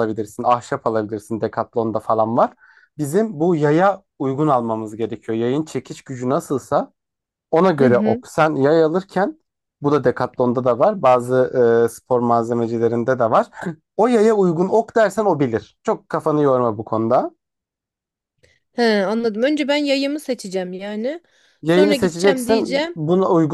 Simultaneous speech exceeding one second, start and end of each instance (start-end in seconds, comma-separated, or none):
21.6-23.0